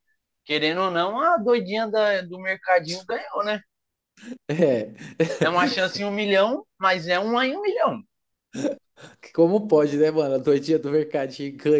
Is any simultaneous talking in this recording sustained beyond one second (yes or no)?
no